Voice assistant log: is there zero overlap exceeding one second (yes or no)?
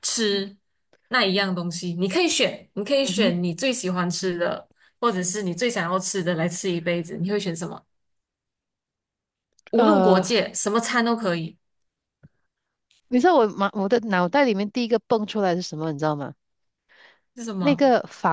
yes